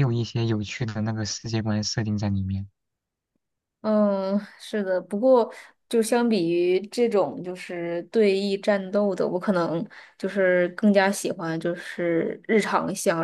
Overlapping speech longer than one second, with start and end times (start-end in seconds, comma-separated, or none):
none